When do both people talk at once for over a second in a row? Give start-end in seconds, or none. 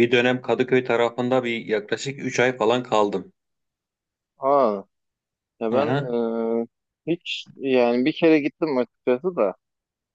none